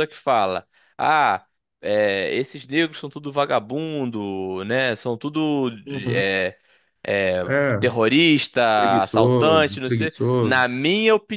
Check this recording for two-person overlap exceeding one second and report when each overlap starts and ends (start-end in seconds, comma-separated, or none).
8.7-10.6